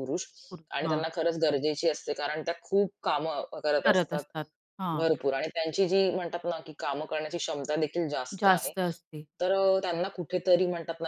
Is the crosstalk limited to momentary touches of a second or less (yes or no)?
yes